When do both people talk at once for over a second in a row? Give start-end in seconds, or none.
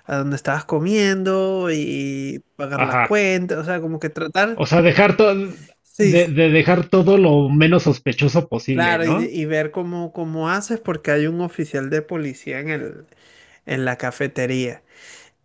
none